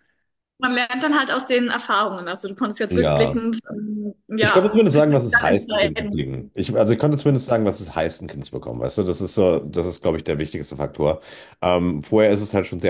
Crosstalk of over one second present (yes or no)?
yes